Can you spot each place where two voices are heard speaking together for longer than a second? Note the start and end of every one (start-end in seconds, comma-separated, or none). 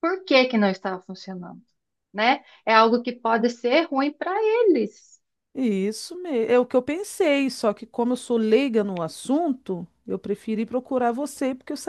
none